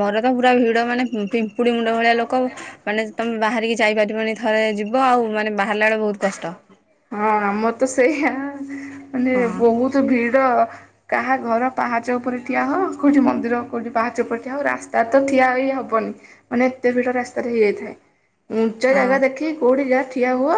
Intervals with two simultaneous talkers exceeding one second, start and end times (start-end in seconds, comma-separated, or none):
none